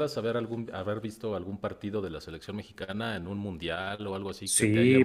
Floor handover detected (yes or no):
yes